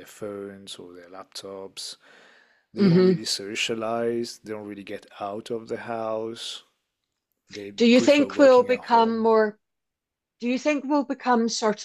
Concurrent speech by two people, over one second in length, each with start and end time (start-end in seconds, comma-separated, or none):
7.8-9.3